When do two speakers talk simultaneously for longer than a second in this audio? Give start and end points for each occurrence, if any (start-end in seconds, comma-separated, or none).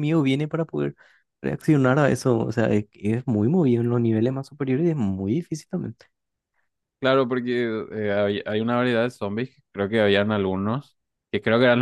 none